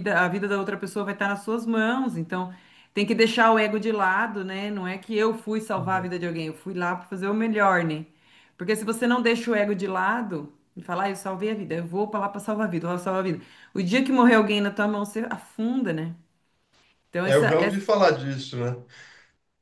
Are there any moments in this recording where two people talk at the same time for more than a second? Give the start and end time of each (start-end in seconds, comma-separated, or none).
none